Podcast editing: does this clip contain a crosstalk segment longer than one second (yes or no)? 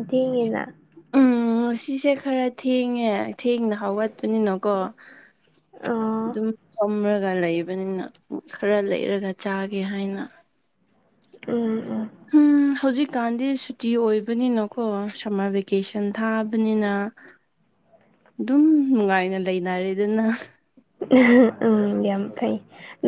no